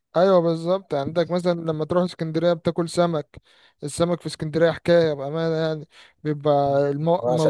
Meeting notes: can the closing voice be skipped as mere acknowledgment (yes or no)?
yes